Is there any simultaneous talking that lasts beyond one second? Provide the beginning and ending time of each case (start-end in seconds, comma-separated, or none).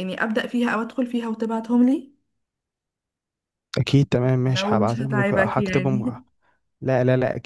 4.5-6.1